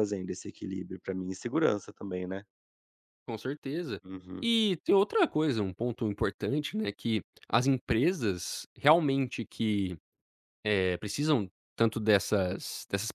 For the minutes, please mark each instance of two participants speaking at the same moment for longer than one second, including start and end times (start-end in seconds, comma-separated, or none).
none